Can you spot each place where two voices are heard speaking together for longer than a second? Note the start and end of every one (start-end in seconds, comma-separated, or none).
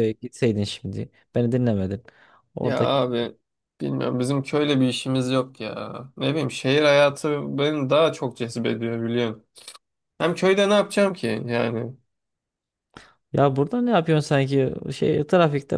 none